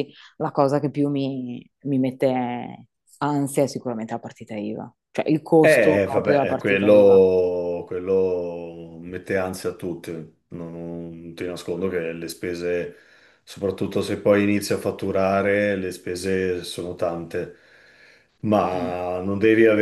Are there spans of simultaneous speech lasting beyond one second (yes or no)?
yes